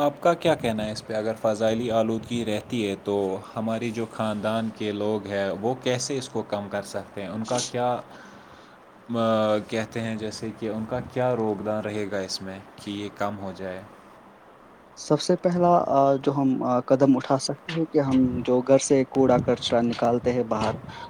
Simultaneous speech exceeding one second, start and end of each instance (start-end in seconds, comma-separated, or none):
none